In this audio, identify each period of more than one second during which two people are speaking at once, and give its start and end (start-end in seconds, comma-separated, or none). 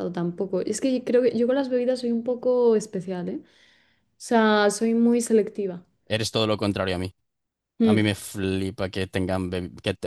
none